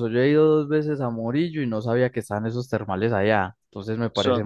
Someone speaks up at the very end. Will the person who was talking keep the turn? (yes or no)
yes